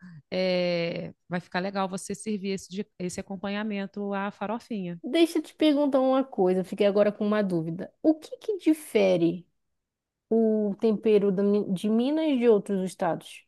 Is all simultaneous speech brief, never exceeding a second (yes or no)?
yes